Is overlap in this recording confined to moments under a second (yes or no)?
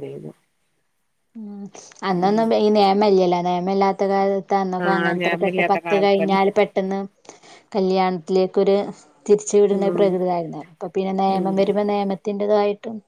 no